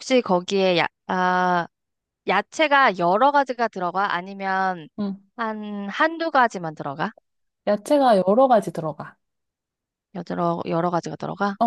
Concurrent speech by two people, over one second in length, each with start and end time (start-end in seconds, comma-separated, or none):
none